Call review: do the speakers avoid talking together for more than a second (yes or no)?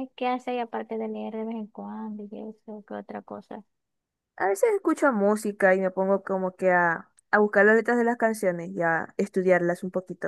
yes